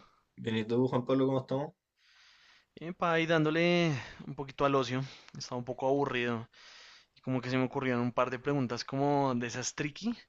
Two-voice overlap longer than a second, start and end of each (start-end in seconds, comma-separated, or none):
none